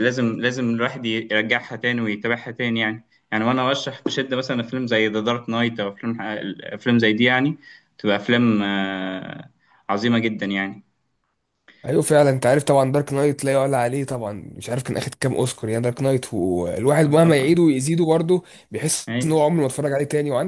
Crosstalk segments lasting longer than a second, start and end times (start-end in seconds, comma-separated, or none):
none